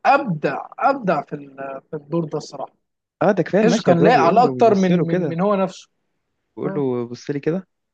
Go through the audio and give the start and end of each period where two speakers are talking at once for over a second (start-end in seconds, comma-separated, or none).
3.6-5.4